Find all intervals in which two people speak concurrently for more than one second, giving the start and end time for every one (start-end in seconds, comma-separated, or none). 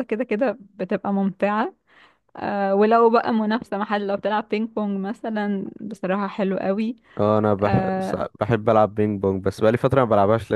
none